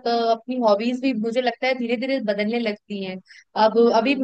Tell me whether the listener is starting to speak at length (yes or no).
no